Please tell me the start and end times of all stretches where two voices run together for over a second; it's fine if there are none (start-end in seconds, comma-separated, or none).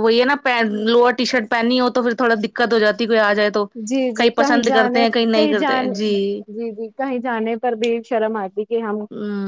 3.9-5.8